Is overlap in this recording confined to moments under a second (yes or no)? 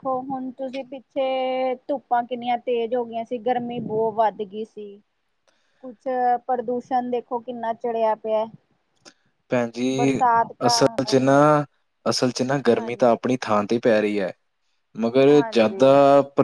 yes